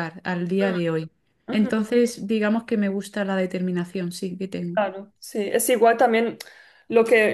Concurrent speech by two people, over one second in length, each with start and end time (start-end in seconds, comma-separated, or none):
none